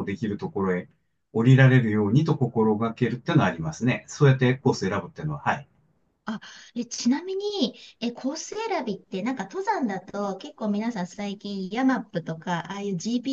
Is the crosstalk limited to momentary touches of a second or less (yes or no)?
yes